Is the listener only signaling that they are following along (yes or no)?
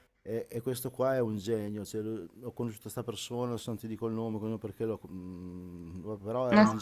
yes